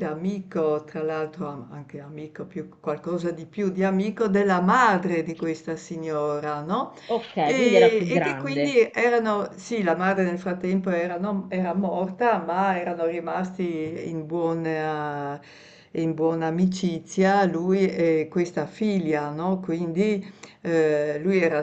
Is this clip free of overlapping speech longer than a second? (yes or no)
no